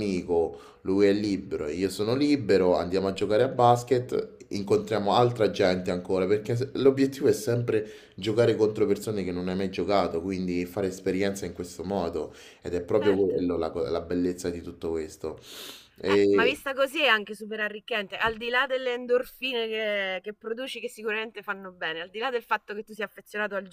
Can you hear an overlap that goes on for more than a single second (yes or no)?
no